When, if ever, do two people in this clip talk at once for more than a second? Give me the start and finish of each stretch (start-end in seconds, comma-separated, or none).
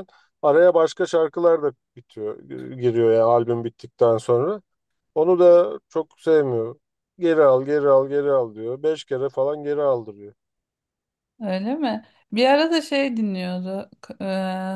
none